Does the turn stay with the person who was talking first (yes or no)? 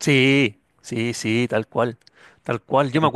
yes